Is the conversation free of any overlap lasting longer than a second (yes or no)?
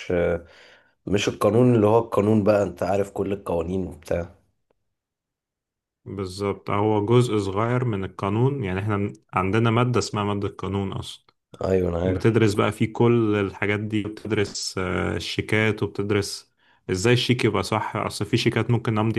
yes